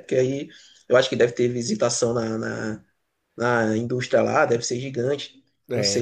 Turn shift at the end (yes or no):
yes